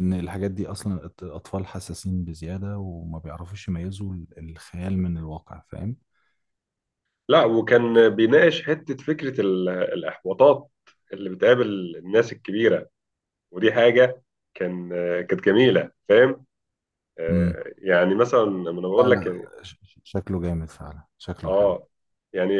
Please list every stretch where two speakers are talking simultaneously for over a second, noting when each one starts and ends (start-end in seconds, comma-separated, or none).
none